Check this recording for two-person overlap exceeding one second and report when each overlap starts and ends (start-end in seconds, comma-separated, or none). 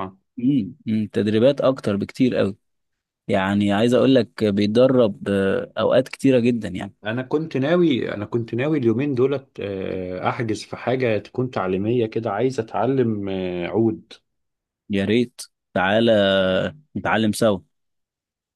none